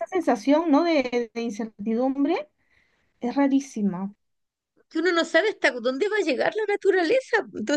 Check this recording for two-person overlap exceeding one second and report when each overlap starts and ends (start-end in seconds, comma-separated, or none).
none